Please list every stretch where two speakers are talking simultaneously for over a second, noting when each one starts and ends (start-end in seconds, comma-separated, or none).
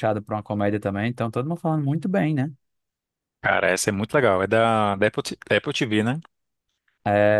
none